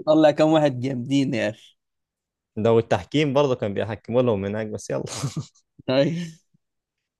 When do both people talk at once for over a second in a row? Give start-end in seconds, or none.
none